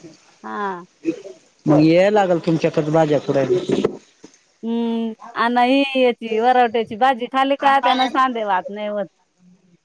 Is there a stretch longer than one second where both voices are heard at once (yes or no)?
no